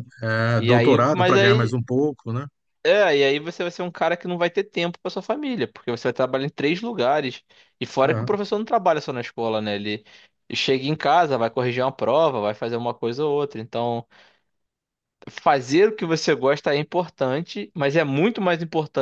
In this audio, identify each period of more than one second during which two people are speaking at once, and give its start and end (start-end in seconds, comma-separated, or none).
0.6-1.8